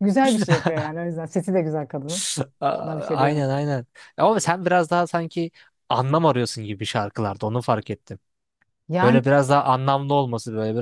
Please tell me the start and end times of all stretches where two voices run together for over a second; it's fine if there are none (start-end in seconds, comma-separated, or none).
none